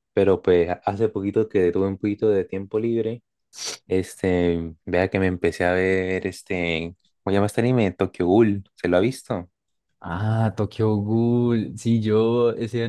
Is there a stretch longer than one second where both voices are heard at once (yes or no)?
no